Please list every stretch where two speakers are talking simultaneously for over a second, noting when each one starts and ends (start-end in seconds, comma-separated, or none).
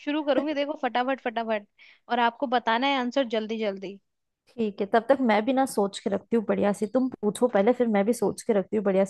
none